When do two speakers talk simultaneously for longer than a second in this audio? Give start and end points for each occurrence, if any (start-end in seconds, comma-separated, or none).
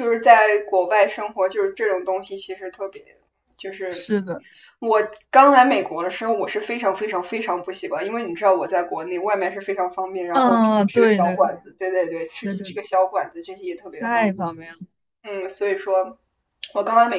10.3-11.6